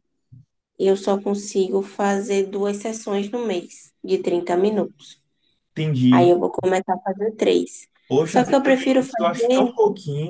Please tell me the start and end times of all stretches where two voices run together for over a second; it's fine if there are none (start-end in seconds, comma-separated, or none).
8.2-9.7